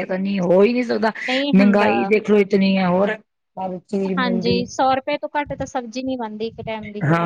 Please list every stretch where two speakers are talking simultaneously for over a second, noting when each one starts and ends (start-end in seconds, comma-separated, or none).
none